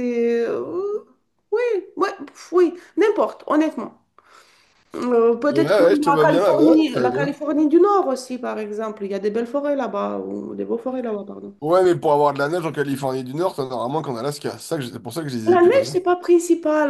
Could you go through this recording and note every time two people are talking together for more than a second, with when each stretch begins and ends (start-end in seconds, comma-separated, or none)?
5.5-7.4